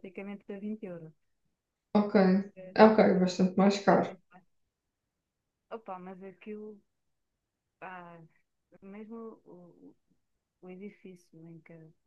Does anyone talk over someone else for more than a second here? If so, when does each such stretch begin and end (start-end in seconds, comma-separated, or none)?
none